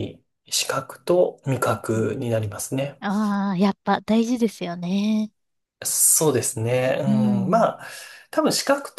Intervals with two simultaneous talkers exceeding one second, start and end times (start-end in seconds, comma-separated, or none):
none